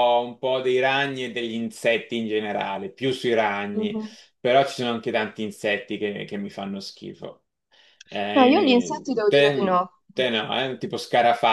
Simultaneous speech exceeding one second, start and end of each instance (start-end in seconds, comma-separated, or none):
8.3-9.9